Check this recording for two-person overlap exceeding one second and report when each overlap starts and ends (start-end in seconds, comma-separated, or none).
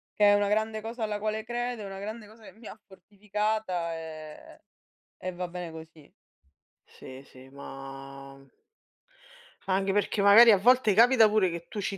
none